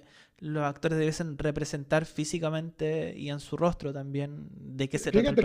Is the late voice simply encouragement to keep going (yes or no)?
no